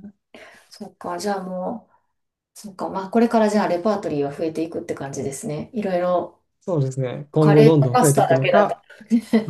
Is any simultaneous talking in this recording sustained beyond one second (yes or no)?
yes